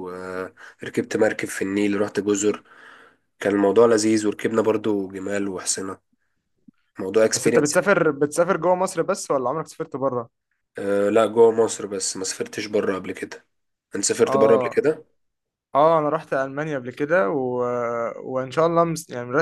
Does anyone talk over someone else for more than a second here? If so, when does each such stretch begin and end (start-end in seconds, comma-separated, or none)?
none